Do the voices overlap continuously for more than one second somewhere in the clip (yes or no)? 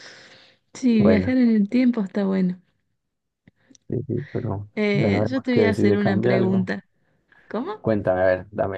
yes